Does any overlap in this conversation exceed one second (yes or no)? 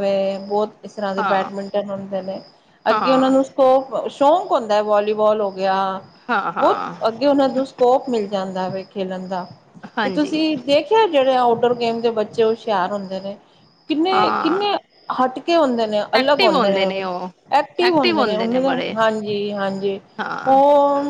no